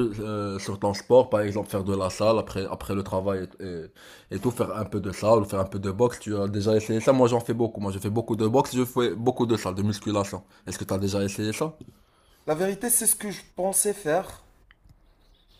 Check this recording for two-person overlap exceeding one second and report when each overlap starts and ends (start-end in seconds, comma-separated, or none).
none